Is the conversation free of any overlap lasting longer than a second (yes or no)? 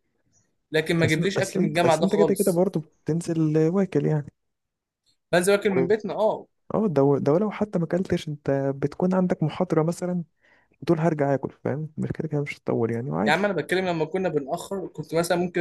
no